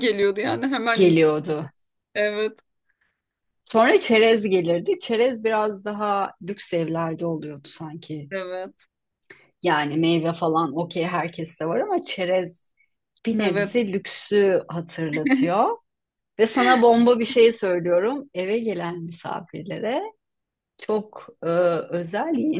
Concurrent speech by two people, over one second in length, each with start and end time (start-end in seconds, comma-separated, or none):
none